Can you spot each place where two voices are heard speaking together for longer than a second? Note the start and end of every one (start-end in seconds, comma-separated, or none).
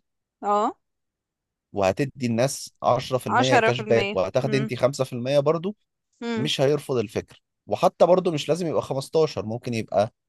3.3-4.7